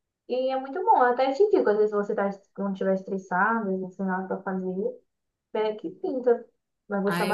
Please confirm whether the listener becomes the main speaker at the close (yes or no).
yes